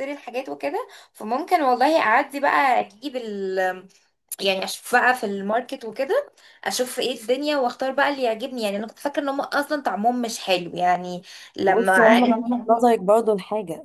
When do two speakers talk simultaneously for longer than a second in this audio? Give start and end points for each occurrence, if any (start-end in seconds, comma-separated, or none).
11.7-12.9